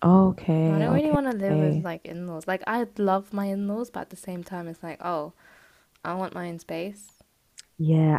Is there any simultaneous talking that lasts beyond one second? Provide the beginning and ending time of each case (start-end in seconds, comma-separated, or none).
0.7-1.9